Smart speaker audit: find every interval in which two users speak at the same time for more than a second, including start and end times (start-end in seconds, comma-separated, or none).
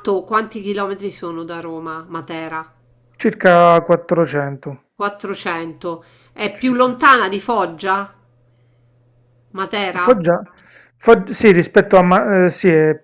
none